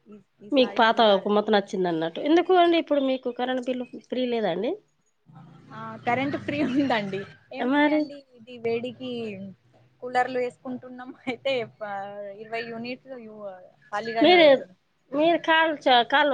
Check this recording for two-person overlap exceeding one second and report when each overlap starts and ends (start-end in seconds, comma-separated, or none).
none